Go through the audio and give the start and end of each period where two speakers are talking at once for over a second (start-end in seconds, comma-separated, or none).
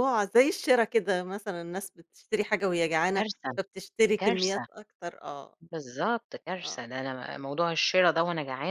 none